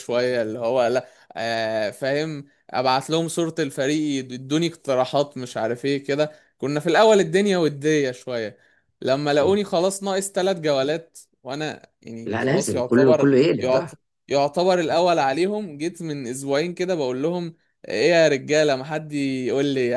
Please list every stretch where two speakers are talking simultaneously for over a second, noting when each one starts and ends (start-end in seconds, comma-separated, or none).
12.3-13.9